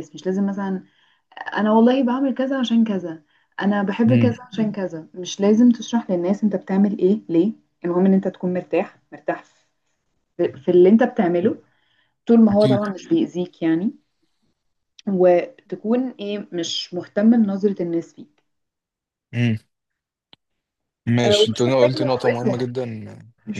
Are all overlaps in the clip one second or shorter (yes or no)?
no